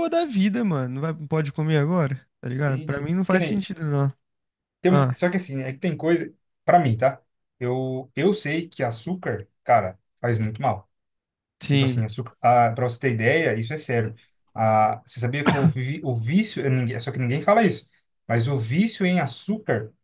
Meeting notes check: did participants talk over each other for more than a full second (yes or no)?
yes